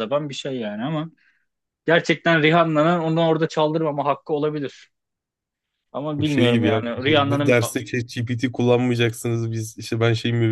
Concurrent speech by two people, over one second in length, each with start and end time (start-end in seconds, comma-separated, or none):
6.2-7.6